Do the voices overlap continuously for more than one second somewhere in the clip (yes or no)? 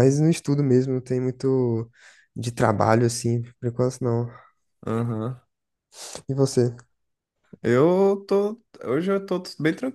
no